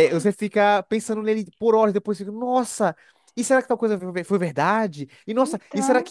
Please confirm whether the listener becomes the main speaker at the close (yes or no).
no